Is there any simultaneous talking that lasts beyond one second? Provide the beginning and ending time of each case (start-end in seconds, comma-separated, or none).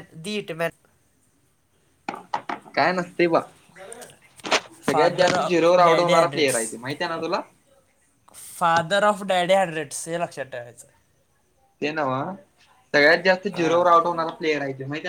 4.8-6.6